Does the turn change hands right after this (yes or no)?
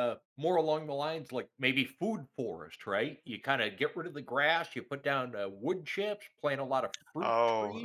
yes